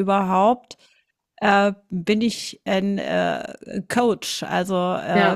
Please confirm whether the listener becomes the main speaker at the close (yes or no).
no